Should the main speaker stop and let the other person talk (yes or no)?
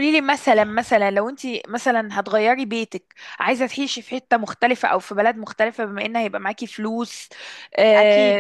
no